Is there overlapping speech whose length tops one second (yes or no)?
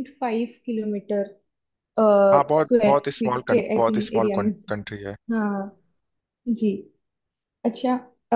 yes